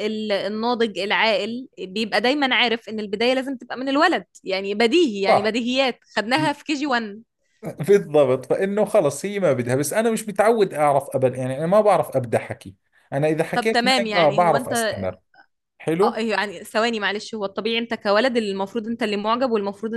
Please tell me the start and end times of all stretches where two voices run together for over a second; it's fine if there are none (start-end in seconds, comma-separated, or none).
13.5-14.7